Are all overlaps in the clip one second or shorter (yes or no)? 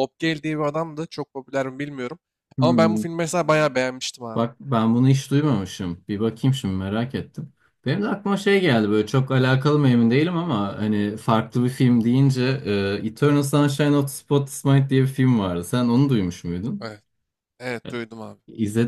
yes